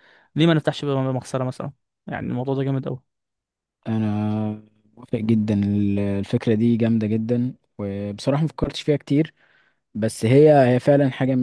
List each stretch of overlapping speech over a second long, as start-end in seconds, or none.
none